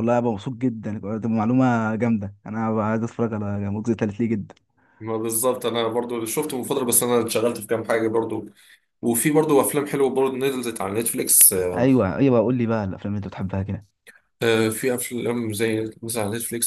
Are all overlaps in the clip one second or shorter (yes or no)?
yes